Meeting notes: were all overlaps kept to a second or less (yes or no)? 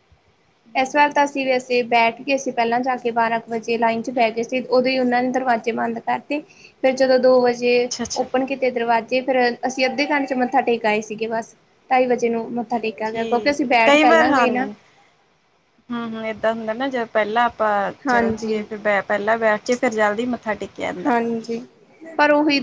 no